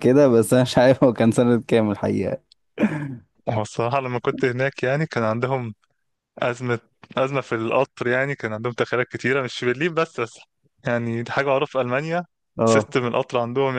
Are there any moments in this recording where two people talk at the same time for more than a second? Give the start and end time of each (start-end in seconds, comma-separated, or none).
none